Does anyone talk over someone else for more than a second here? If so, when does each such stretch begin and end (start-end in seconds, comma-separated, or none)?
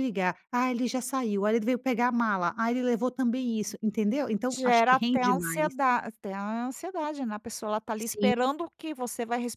4.5-5.7